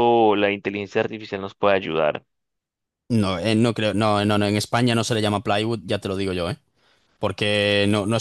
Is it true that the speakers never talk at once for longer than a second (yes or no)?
yes